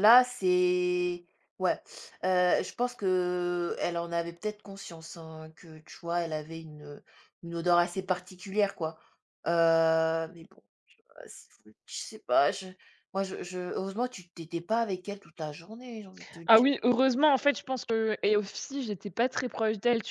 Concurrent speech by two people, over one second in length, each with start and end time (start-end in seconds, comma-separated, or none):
none